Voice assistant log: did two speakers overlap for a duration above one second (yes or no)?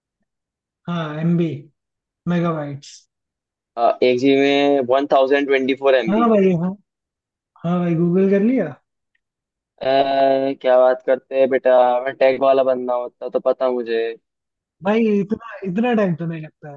no